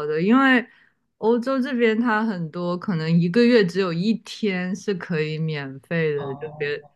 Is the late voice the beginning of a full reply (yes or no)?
no